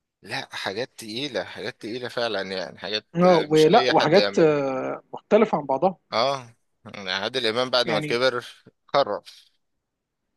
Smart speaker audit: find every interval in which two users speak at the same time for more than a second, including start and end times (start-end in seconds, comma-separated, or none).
3.1-4.6